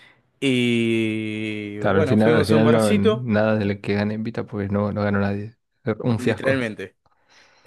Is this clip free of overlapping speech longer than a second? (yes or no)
no